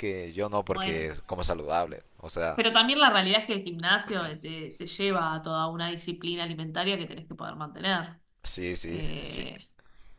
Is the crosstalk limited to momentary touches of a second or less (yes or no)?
yes